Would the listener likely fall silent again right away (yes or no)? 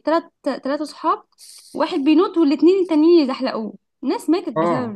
no